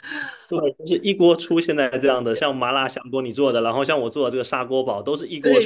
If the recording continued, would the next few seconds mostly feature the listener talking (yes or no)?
yes